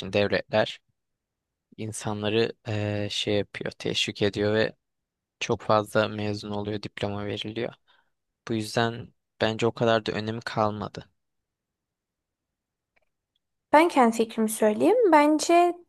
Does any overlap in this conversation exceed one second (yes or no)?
no